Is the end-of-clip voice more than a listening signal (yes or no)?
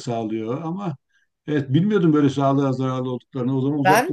yes